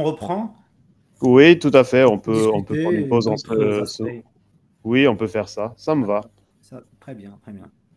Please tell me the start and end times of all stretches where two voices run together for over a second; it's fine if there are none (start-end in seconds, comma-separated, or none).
2.1-4.0